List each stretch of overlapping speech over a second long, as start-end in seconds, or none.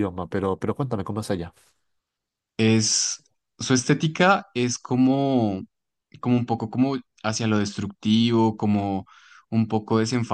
none